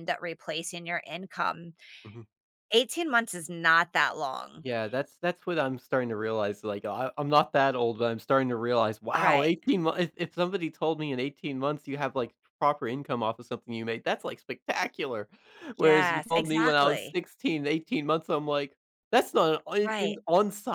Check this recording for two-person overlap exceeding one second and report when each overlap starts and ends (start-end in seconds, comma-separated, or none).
15.8-17.2